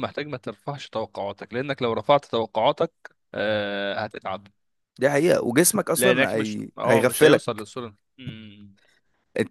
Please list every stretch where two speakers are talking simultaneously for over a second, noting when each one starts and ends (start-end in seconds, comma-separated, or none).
6.0-7.7